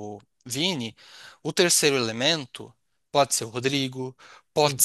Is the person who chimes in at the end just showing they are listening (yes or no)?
yes